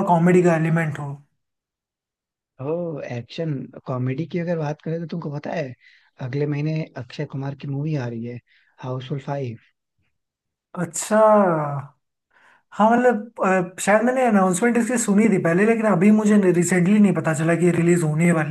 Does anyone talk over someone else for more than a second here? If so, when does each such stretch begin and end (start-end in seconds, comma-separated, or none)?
none